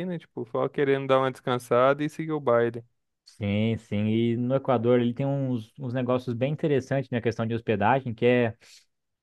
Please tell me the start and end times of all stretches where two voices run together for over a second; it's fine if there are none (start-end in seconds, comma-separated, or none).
none